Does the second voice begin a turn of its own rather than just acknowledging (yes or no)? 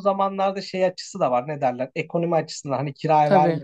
no